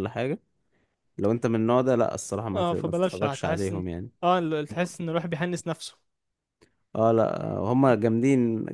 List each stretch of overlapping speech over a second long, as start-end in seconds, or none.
2.5-3.8